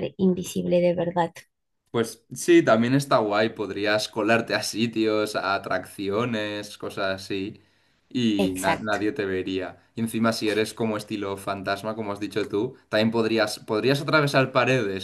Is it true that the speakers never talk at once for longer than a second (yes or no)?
yes